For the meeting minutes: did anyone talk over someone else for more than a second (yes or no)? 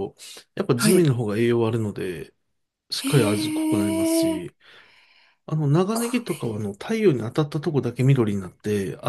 yes